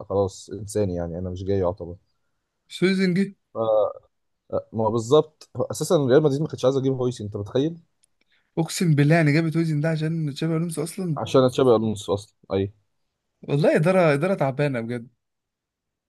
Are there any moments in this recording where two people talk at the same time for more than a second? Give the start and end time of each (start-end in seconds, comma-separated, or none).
none